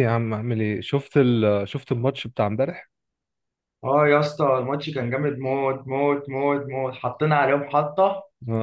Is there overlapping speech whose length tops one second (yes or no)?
no